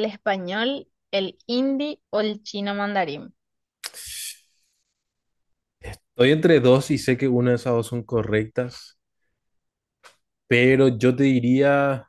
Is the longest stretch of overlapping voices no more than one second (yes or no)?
yes